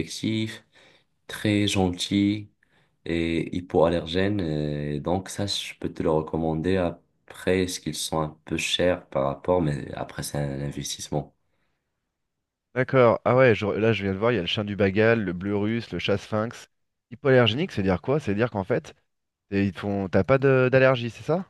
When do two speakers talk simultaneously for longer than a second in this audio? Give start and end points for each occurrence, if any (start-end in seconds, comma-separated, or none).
none